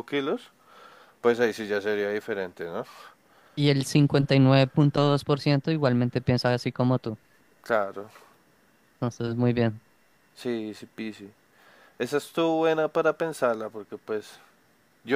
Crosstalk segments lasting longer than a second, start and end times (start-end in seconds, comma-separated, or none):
none